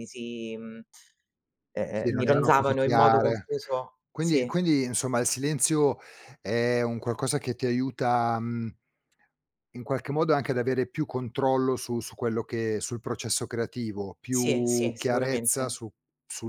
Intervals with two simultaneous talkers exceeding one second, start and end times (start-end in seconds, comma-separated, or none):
1.9-3.5, 14.3-15.8